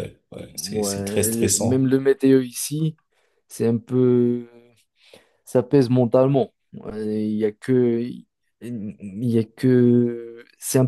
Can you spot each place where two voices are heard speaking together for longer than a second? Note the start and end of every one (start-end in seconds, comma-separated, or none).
0.5-1.9